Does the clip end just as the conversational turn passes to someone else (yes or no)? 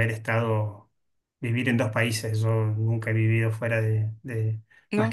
no